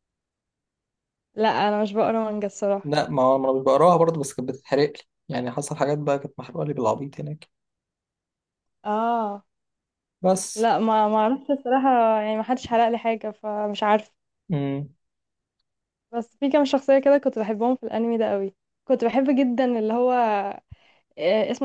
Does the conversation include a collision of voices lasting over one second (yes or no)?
no